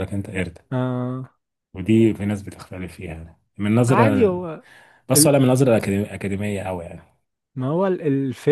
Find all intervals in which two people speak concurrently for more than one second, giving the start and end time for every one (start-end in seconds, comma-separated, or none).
none